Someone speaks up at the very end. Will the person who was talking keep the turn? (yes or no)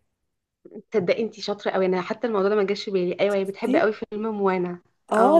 no